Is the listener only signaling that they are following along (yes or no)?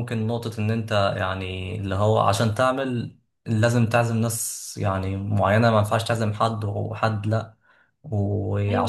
yes